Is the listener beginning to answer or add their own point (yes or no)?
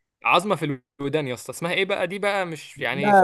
yes